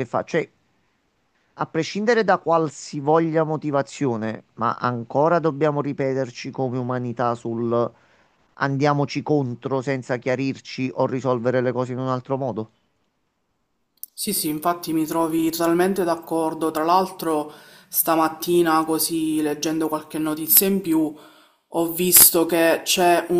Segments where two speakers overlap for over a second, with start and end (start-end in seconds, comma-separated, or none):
none